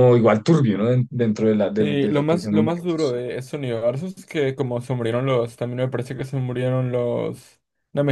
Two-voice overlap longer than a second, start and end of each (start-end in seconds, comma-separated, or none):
1.8-3.2